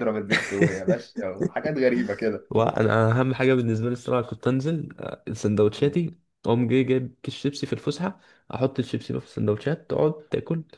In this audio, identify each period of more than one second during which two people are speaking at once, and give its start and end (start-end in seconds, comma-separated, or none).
none